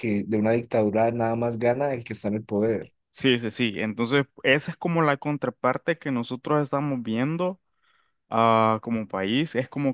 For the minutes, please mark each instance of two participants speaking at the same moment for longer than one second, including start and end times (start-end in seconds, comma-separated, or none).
none